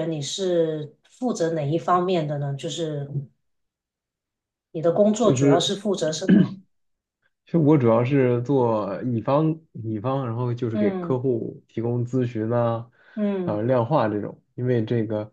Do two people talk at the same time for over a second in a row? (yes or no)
no